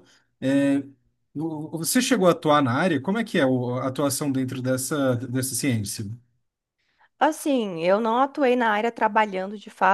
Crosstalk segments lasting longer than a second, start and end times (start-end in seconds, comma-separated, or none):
none